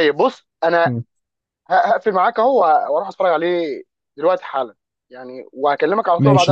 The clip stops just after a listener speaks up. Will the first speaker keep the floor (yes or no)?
no